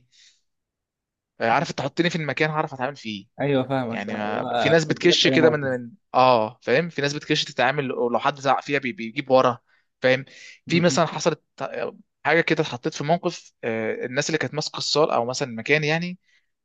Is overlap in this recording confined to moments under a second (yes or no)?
no